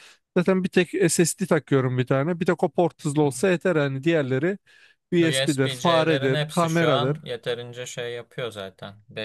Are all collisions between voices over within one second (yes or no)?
no